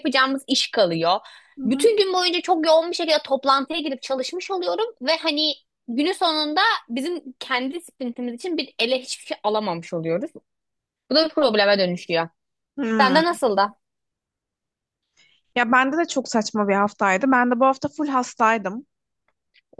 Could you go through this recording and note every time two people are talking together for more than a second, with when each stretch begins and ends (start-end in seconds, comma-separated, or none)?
none